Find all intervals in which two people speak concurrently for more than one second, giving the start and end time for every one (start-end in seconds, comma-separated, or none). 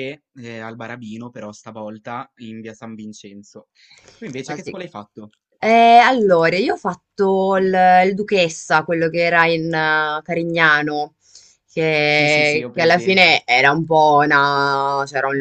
12.1-13.4